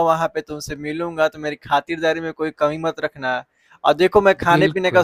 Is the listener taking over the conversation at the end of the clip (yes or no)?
no